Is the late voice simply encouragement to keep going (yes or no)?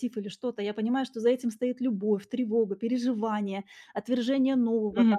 yes